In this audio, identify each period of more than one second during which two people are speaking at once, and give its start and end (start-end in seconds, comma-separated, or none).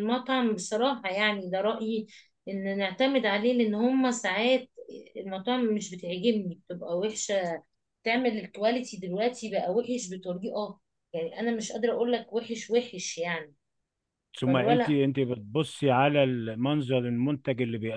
none